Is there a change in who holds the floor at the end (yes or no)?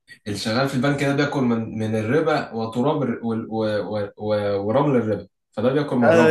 yes